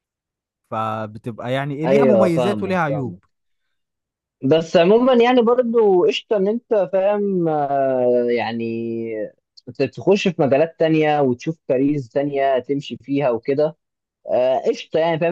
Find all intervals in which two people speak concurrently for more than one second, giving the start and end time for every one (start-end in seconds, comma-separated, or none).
1.9-3.2